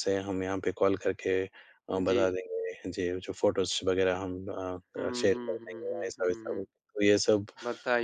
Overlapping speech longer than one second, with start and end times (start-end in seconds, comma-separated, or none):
5.0-6.7